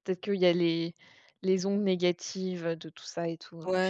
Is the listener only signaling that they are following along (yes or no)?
no